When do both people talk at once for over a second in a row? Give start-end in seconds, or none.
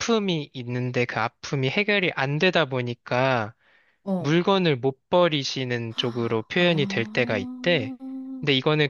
6.6-7.9